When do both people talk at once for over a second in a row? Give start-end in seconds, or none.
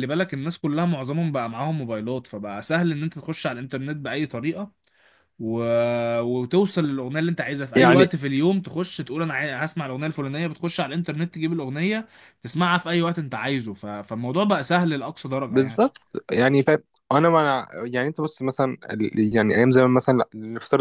none